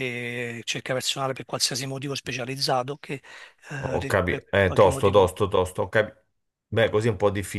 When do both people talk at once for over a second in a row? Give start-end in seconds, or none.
3.8-5.3